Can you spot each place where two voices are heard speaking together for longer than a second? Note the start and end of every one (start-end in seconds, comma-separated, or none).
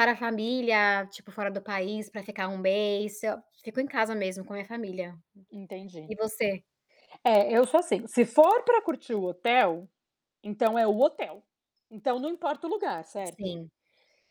none